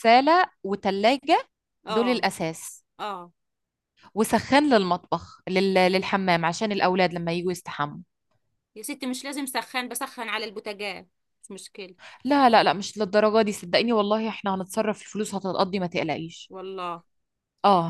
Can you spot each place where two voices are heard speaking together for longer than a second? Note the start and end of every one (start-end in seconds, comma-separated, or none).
none